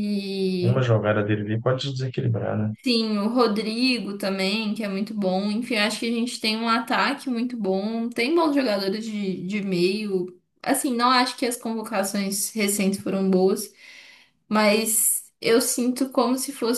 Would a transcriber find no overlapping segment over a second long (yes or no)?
yes